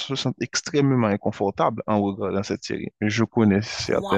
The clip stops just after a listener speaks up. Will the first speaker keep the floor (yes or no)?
no